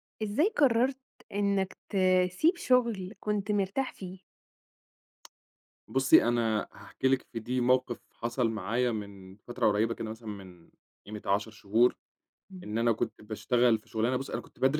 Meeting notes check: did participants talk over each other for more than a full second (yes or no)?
no